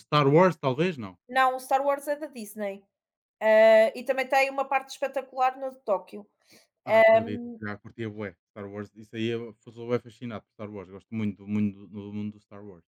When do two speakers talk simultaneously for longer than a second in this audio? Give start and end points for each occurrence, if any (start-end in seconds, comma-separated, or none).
none